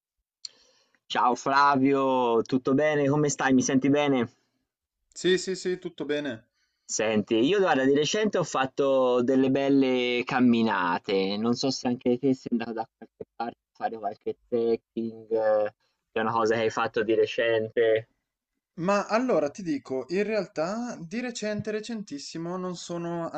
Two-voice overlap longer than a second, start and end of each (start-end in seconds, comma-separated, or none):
none